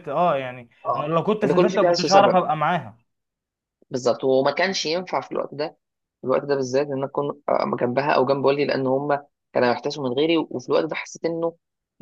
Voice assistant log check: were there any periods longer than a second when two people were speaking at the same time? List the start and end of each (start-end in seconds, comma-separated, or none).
0.8-2.4